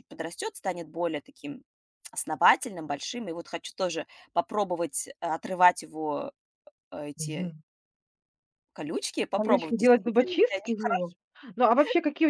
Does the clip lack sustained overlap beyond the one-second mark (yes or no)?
no